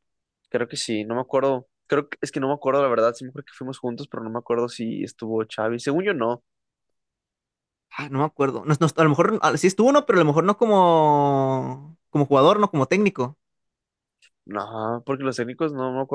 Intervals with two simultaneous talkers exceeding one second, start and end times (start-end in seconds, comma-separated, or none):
none